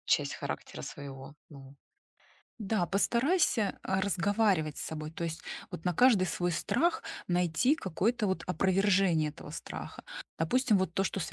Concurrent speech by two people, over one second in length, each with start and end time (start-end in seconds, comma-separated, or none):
none